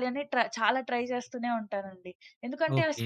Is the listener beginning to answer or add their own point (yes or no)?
yes